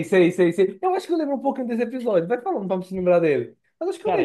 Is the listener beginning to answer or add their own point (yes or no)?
yes